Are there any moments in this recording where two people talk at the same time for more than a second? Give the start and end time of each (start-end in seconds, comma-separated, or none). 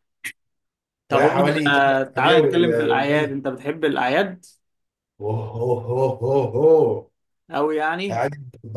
1.1-3.4